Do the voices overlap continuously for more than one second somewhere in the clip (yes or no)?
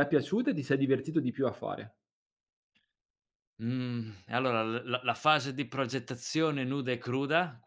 no